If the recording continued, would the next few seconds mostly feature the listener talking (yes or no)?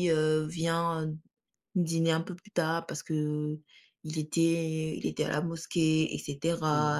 no